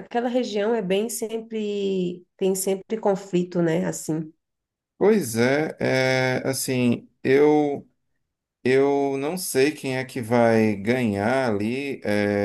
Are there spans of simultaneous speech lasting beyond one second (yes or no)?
no